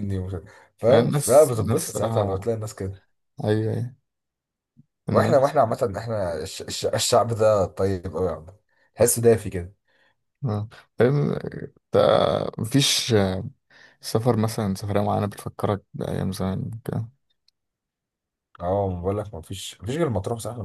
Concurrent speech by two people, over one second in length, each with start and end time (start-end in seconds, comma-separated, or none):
0.9-2.5